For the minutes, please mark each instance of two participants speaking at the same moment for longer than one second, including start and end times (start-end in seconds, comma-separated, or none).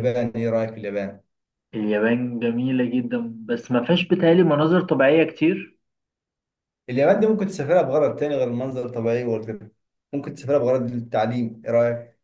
none